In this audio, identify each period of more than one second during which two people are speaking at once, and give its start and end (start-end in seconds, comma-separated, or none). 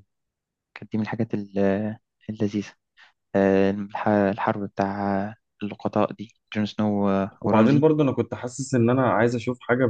none